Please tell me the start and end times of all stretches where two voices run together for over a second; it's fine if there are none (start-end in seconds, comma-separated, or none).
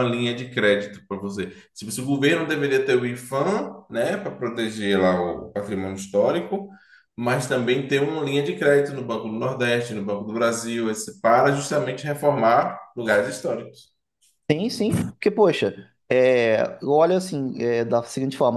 none